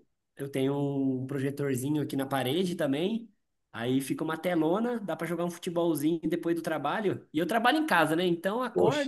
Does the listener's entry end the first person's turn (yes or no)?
no